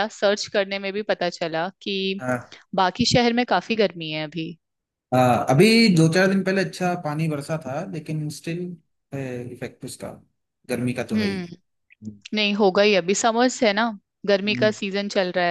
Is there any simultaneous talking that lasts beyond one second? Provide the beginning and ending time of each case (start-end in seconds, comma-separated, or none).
none